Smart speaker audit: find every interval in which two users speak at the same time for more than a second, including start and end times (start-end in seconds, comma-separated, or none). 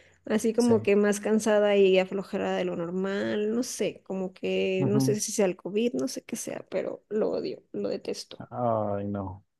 none